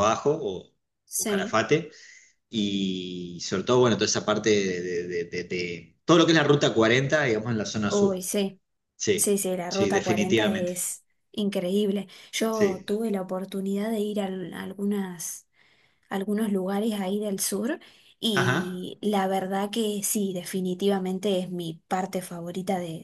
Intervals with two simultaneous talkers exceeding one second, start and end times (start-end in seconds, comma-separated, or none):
9.2-10.7